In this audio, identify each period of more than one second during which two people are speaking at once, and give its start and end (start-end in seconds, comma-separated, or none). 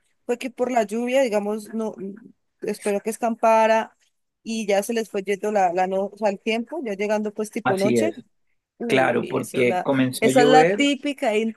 8.8-10.9